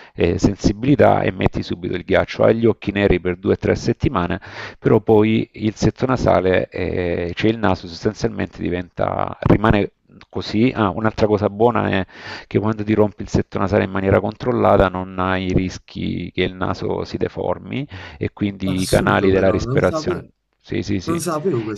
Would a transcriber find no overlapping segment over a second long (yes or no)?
no